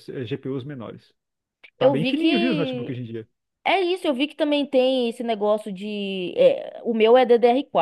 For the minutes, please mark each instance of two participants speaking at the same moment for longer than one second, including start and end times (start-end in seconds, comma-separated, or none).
1.8-3.0